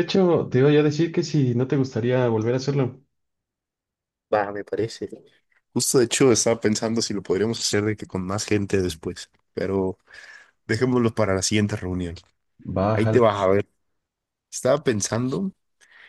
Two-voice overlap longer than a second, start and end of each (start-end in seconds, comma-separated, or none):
none